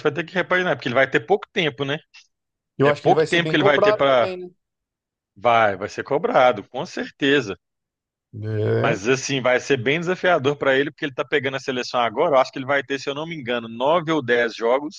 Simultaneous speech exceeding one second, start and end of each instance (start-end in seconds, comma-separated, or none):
2.8-4.4